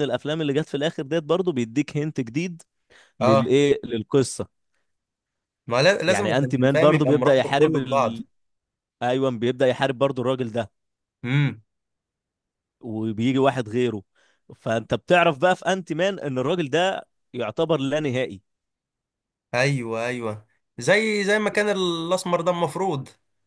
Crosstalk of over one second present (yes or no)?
yes